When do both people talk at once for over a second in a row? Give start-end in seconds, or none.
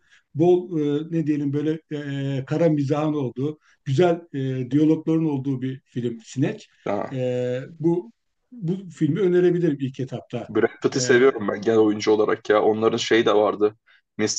none